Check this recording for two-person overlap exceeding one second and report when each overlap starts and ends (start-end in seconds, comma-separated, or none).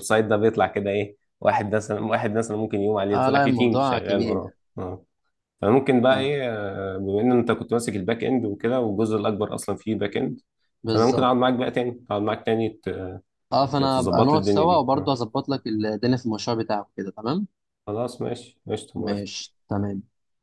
3.1-4.6, 13.8-15.1